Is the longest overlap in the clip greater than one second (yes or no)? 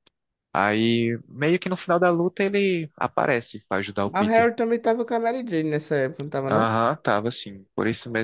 no